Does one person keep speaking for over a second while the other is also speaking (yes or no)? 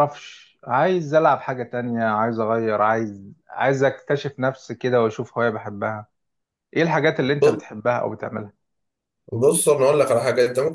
no